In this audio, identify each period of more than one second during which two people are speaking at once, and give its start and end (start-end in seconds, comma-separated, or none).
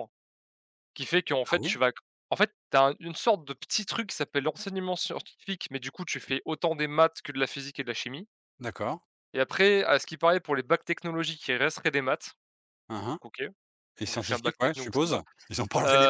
14.0-15.2